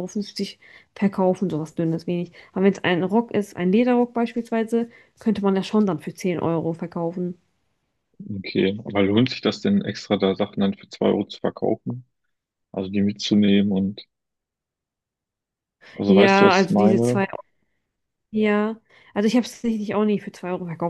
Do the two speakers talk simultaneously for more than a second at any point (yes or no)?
yes